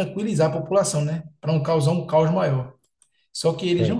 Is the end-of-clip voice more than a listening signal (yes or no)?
no